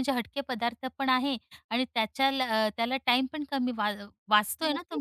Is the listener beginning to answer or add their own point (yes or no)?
yes